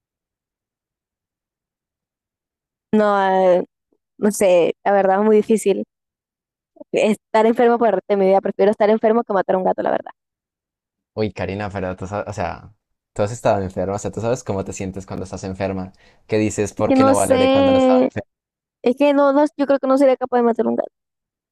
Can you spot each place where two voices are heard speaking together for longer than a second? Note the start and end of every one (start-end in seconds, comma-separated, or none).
16.8-18.1